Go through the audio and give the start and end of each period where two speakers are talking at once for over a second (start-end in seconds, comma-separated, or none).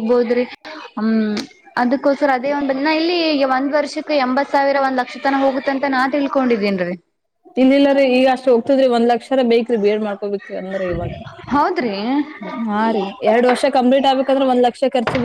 none